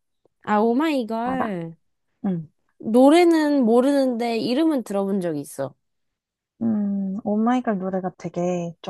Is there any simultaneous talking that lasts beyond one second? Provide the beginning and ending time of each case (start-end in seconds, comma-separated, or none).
none